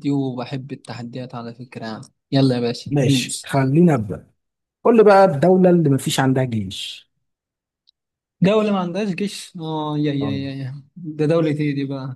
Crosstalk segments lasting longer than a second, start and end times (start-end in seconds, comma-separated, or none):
none